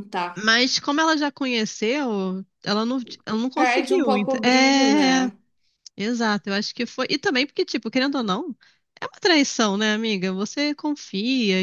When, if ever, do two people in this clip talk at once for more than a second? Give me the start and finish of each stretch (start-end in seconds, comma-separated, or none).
3.5-5.3